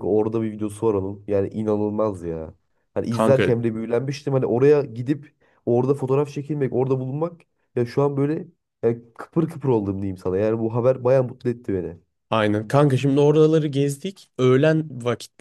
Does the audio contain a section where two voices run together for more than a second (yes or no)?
no